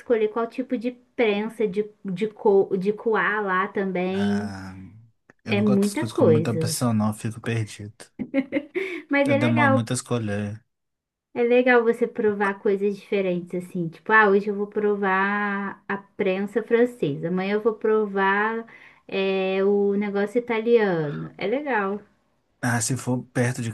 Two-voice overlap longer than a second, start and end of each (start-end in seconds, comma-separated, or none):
5.5-6.8